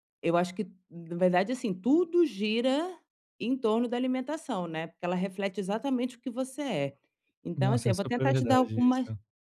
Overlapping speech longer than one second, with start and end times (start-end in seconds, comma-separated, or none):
7.6-9.1